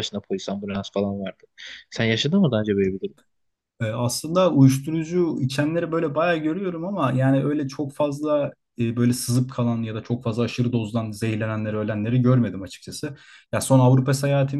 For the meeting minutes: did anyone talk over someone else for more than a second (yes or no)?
no